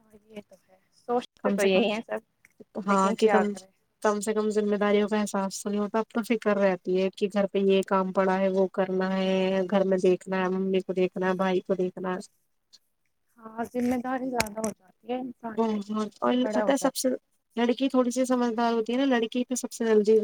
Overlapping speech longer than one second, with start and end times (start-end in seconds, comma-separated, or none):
15.6-17.1